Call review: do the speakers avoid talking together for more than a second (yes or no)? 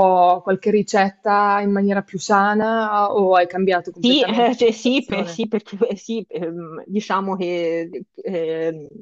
no